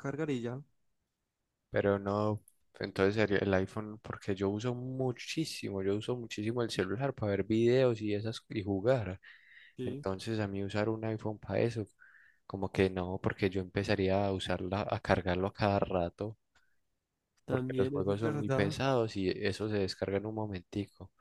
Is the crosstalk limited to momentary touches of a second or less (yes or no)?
no